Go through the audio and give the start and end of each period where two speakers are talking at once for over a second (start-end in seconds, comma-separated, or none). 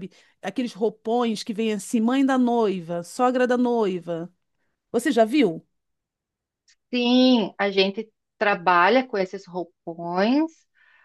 none